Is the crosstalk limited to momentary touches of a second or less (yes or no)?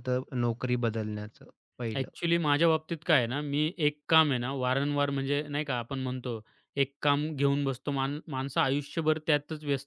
yes